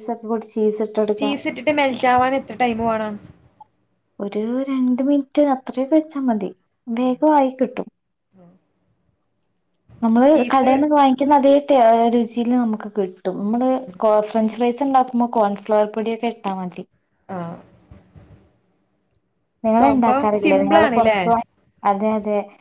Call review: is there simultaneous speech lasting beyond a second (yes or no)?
yes